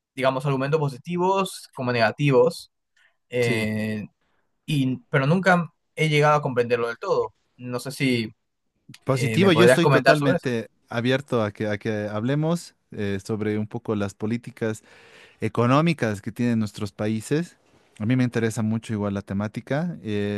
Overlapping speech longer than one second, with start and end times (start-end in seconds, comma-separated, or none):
9.1-10.5